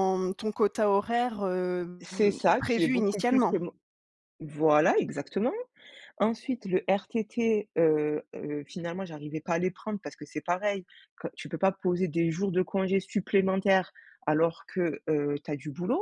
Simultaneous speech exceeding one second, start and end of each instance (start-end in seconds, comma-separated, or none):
2.0-3.6